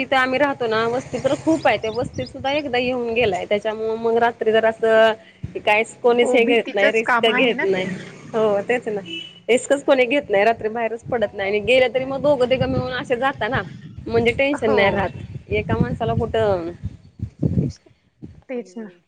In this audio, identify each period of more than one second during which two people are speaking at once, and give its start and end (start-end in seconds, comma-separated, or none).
6.2-7.8